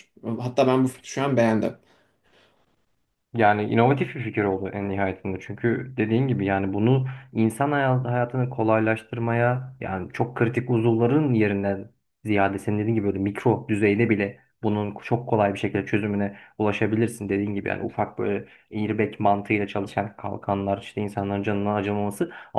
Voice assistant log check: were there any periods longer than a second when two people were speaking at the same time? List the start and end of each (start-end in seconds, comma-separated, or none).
none